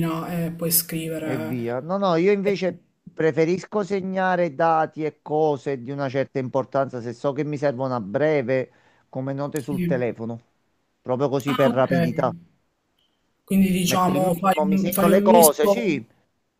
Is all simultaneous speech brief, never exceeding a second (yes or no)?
no